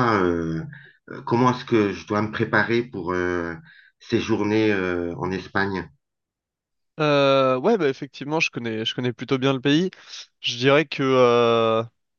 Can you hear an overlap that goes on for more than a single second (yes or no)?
no